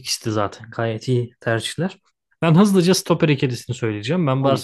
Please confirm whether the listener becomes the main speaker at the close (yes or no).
no